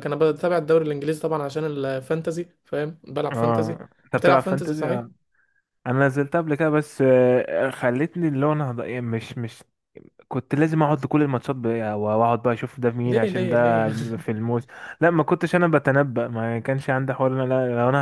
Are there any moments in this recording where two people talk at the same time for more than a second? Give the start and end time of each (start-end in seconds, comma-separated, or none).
3.3-5.1